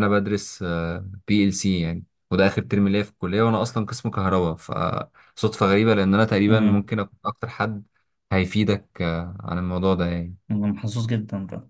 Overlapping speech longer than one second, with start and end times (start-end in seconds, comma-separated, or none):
none